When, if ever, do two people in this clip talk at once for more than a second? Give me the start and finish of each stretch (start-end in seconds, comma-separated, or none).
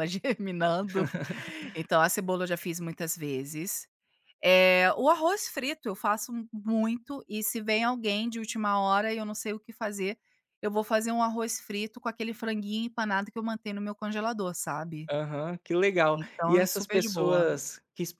16.1-17.5